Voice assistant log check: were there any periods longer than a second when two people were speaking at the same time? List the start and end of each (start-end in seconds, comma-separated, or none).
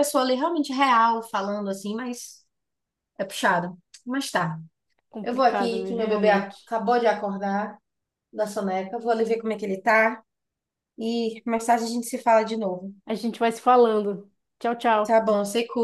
5.2-6.8